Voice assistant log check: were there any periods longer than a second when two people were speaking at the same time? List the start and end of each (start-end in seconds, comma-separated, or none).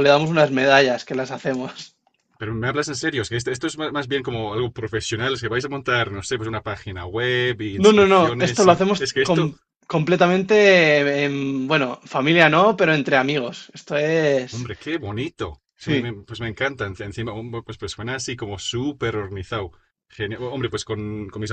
7.8-9.5